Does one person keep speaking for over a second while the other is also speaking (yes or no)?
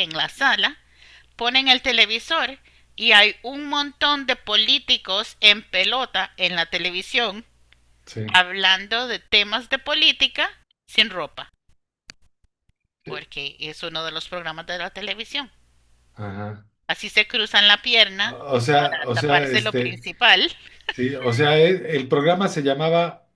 yes